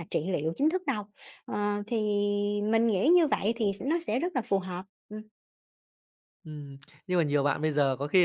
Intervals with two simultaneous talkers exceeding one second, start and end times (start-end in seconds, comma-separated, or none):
none